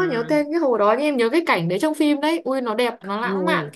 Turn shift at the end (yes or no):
yes